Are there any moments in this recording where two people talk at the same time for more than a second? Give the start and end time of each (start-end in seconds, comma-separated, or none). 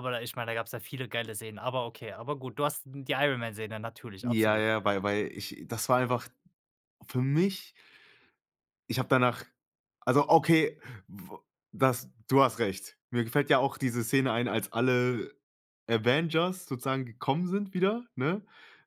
none